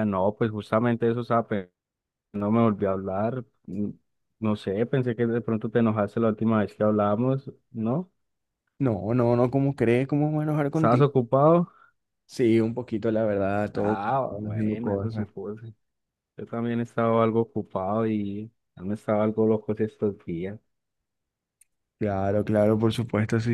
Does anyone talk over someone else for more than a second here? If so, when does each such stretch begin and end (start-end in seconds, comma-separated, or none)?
13.7-15.3